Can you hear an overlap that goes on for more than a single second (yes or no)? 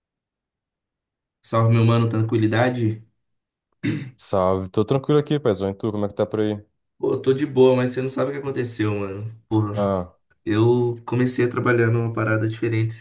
no